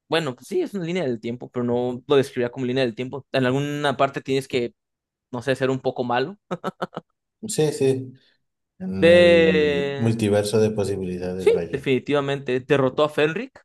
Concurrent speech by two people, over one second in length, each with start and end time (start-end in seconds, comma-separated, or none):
9.0-10.2